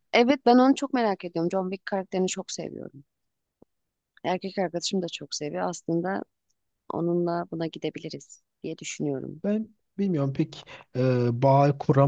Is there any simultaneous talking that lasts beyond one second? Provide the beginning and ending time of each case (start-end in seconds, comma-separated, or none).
none